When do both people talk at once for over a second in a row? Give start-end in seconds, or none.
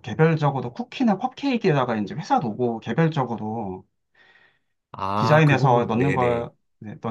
5.2-6.5